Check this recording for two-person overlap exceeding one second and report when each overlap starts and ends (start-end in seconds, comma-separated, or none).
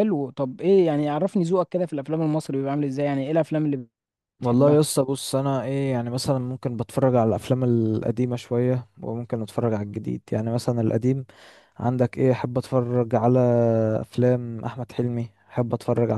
none